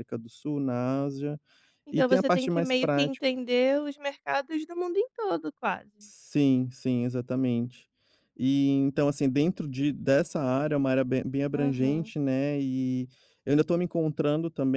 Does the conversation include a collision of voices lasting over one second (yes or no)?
yes